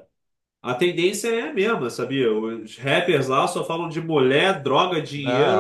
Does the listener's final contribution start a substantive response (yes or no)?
yes